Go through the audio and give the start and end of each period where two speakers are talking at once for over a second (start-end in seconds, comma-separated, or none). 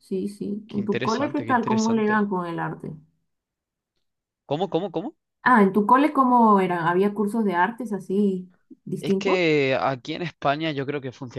0.7-2.2